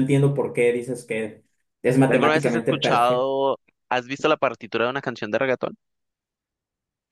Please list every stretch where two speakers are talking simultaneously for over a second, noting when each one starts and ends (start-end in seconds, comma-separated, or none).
2.1-3.3